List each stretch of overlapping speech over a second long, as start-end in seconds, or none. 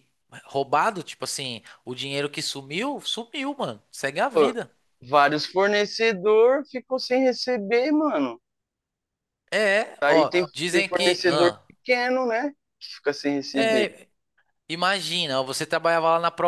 10.0-11.6